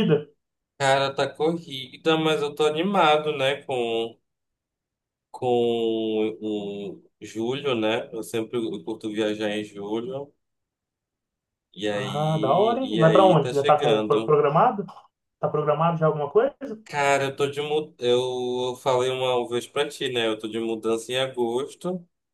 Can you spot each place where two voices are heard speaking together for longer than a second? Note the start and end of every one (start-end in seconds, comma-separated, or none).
11.9-14.4